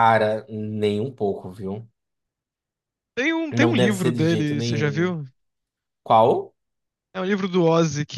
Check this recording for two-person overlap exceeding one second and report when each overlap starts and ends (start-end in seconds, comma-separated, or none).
3.5-5.2